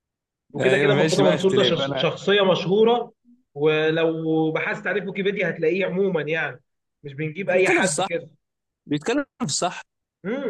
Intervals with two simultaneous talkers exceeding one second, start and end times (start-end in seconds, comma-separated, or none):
0.6-2.1